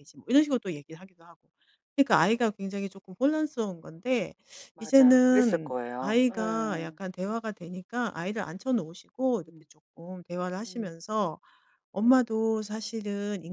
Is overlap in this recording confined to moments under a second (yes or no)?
no